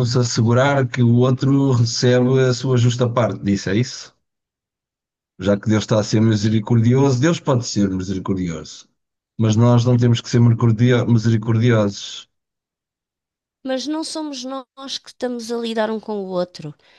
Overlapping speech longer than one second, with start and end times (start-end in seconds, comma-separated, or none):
none